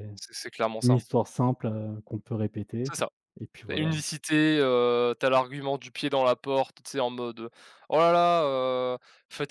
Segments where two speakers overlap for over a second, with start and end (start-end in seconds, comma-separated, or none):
none